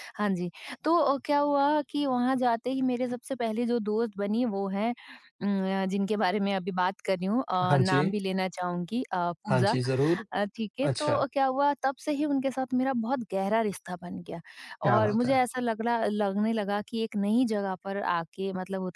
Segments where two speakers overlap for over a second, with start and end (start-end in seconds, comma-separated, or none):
none